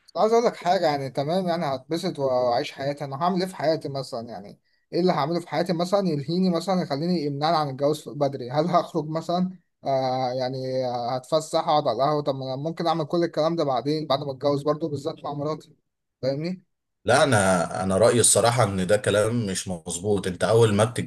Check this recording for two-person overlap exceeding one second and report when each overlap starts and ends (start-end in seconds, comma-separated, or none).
none